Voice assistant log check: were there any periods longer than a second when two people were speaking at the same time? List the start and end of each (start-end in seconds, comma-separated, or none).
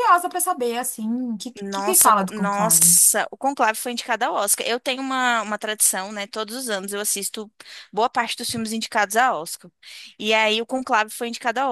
1.6-3.0